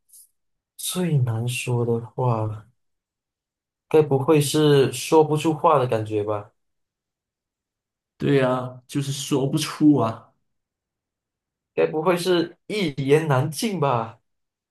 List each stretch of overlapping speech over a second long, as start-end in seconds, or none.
none